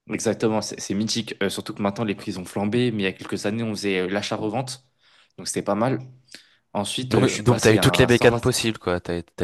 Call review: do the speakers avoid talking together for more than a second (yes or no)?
no